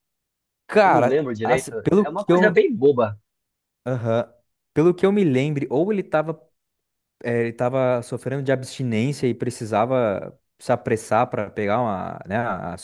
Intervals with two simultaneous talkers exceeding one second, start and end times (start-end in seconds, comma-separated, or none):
0.8-2.6